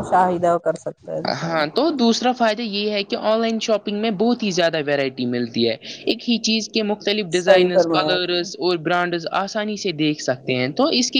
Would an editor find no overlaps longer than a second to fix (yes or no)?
no